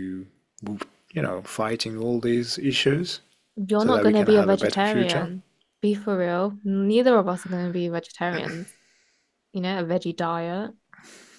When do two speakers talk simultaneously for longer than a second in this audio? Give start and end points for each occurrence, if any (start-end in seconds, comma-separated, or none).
3.8-5.3